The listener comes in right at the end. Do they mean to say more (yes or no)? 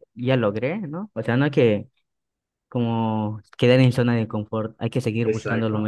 yes